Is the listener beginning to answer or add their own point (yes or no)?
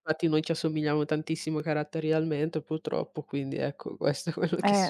yes